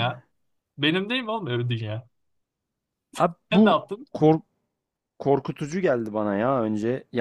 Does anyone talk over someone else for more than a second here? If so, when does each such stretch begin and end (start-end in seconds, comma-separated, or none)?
none